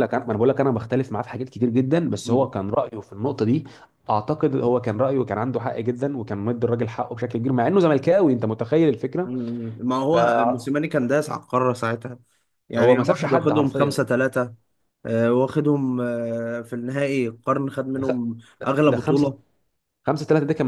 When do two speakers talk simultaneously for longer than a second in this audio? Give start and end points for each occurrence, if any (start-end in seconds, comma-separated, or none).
12.8-14.0